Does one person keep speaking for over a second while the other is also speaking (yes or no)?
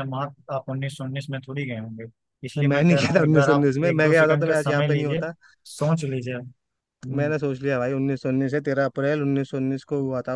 yes